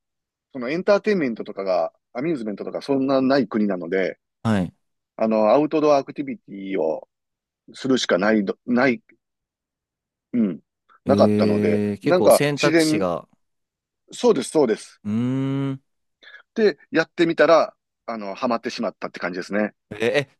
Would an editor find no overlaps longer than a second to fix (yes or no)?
no